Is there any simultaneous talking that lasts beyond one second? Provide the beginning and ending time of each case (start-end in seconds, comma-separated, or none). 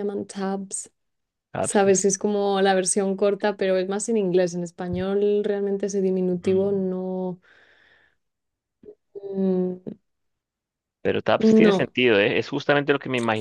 none